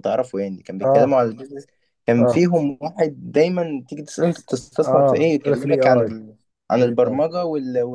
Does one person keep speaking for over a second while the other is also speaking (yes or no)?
yes